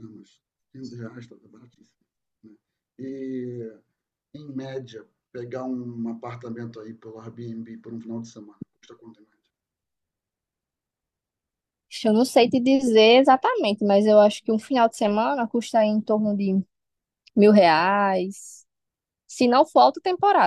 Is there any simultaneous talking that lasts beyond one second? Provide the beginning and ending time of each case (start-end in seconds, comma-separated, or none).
none